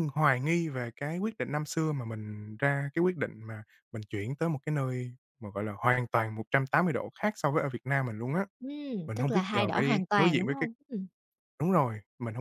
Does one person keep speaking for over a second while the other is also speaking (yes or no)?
yes